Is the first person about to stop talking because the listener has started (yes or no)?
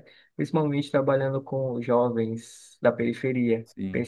no